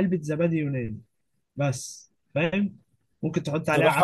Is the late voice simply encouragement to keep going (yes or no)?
no